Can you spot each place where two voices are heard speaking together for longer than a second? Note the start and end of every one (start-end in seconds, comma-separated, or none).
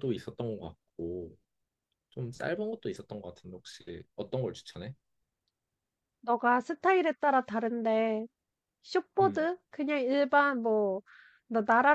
none